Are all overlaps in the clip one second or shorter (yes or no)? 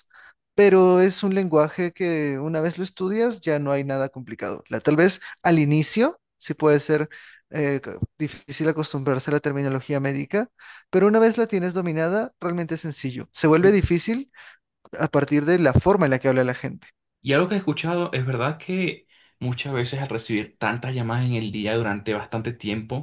yes